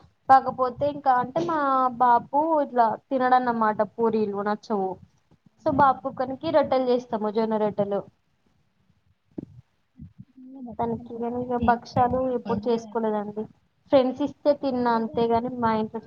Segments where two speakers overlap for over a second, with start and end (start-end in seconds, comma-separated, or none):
10.8-12.8